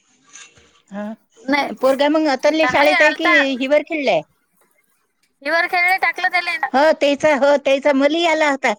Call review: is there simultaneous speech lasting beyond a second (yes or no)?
no